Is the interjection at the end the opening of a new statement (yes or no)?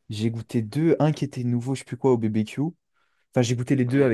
no